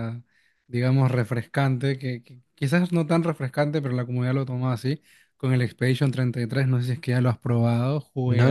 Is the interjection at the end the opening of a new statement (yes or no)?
yes